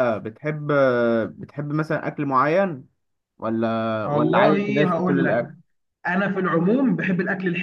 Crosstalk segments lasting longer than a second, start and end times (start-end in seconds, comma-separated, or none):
4.1-5.4